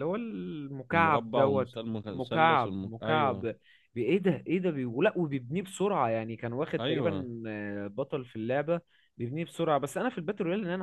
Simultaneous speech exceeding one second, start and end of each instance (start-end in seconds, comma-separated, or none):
0.9-3.4